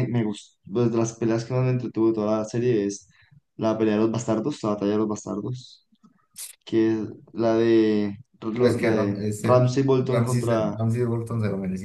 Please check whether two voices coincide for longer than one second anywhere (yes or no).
yes